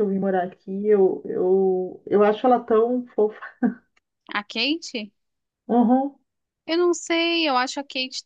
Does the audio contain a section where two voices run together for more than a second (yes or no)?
no